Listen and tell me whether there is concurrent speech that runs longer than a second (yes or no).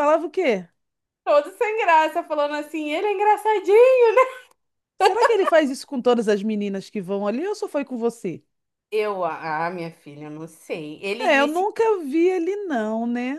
no